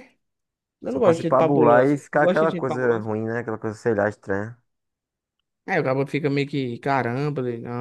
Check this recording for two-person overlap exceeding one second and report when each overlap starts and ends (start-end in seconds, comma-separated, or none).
0.9-3.1